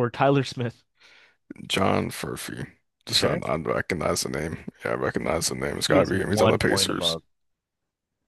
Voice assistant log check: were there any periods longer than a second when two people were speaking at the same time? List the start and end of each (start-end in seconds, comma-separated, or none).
5.9-7.2